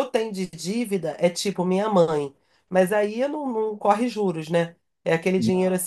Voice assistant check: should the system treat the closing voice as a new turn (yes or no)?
no